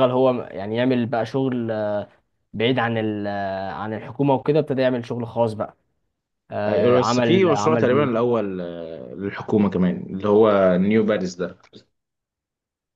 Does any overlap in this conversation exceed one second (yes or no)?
yes